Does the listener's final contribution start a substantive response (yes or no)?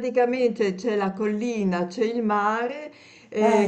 no